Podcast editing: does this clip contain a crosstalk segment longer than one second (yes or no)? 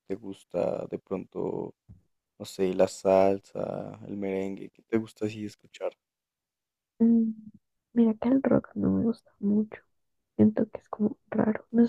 no